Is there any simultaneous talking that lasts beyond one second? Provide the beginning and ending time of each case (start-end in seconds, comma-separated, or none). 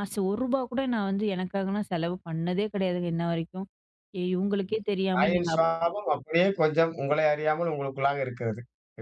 none